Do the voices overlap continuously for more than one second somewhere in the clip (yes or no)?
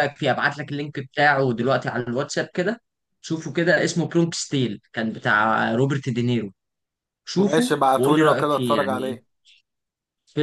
yes